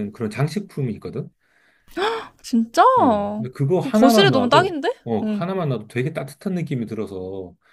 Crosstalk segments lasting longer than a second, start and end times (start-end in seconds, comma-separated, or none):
3.8-5.5